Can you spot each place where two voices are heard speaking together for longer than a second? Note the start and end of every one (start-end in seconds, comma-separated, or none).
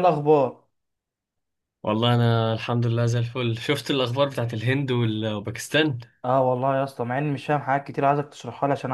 none